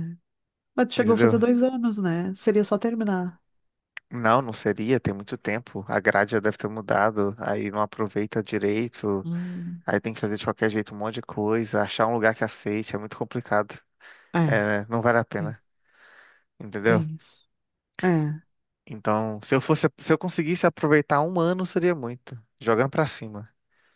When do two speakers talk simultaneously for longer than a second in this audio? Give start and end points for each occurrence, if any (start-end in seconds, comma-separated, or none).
none